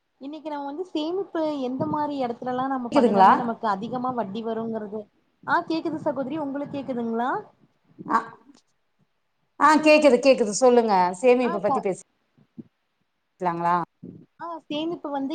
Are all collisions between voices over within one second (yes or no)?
yes